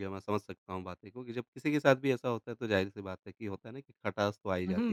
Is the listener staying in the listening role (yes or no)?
no